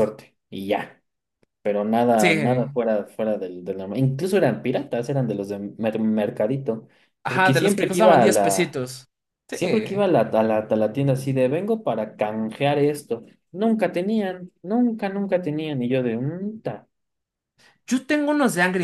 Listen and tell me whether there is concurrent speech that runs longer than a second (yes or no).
yes